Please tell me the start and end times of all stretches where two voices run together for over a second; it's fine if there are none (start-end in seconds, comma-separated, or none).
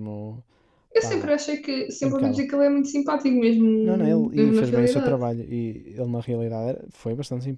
3.8-5.2